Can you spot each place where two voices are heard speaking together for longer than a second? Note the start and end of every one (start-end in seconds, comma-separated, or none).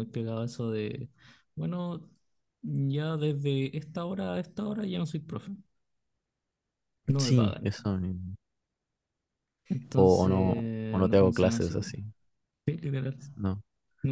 9.9-11.9